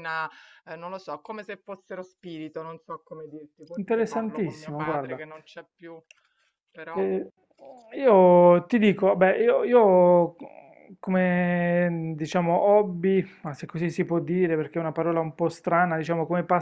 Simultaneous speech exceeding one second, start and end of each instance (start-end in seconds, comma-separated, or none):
3.7-5.2